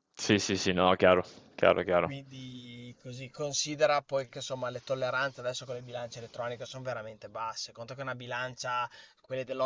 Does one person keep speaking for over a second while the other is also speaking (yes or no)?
no